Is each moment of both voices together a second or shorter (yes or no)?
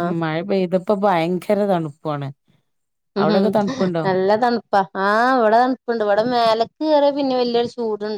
yes